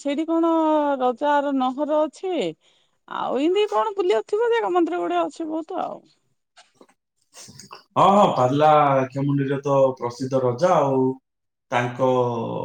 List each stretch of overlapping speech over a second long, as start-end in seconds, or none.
none